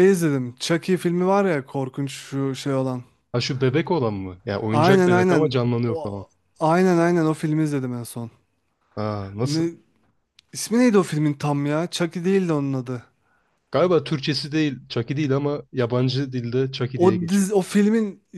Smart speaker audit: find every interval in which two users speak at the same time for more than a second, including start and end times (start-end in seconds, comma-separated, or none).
4.7-6.2